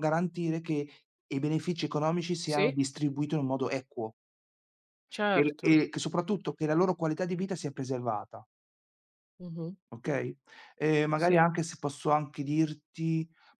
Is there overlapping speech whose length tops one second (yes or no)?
no